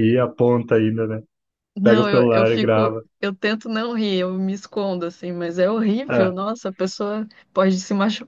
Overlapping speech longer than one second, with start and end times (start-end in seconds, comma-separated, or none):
1.8-3.0